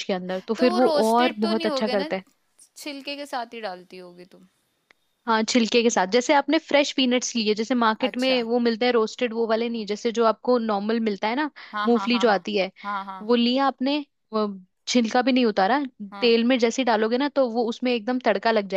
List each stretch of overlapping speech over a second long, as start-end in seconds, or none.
0.6-2.1